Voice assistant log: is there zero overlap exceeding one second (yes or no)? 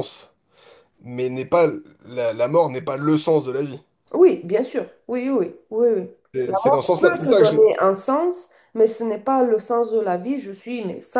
no